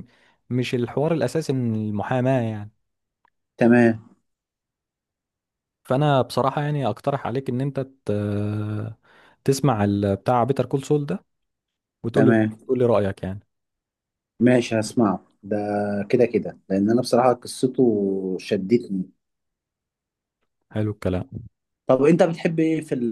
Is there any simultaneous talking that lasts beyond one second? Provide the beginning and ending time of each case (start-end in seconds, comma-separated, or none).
none